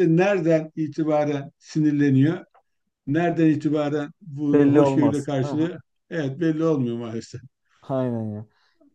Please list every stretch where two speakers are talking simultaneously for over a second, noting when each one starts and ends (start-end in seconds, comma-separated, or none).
4.5-5.7